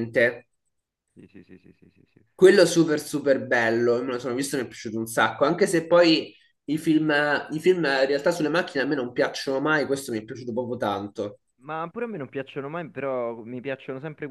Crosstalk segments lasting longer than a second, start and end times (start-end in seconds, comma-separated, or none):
none